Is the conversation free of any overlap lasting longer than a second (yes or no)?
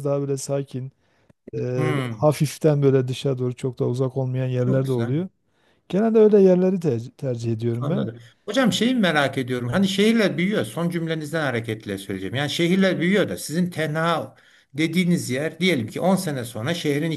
yes